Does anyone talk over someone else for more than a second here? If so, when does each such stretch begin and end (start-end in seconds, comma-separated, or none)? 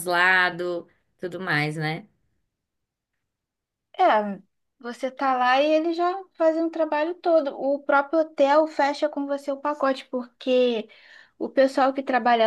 none